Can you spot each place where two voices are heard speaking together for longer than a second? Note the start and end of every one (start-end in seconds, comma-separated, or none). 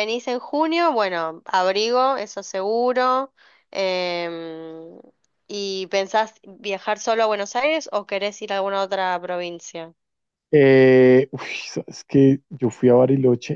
none